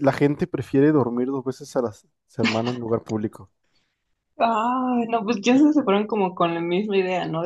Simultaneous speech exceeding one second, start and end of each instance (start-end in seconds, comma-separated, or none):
none